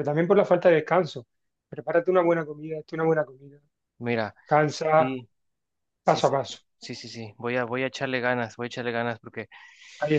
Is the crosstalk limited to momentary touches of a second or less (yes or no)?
yes